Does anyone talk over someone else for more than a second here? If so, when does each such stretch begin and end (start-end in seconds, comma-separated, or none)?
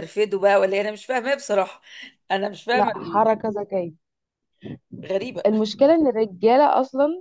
none